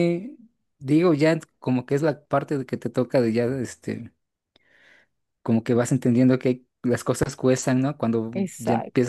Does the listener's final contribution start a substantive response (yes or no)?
no